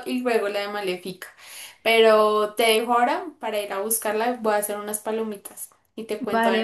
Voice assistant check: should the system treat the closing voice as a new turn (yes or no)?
yes